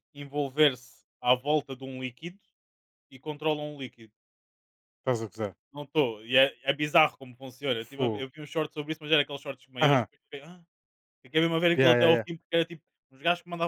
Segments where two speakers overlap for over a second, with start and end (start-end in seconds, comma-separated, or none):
none